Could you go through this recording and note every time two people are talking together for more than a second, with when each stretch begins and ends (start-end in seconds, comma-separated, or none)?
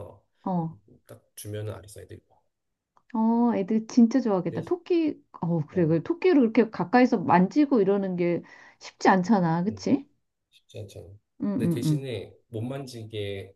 none